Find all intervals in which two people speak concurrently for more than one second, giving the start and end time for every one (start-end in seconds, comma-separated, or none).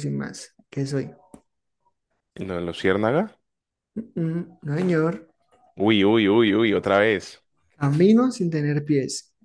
none